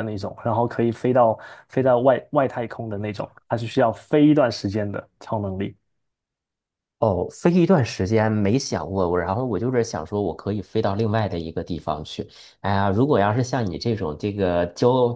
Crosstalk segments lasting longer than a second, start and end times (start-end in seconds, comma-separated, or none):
none